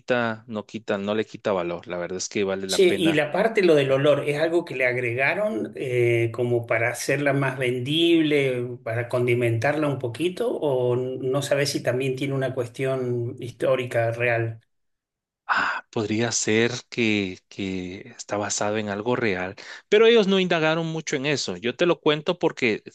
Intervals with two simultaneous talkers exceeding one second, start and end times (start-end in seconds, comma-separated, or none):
none